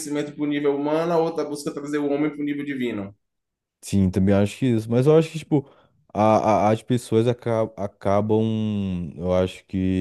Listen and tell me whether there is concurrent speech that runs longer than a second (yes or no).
no